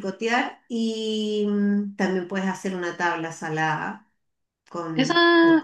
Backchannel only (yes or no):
no